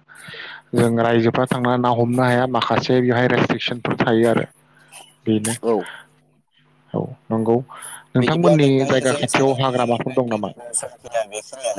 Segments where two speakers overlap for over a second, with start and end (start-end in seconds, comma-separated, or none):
8.2-10.5